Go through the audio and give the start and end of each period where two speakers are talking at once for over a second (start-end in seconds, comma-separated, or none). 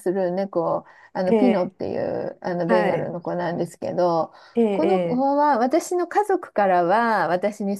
none